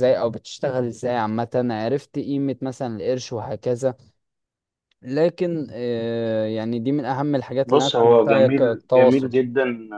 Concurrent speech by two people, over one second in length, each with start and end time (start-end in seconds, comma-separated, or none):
7.7-9.3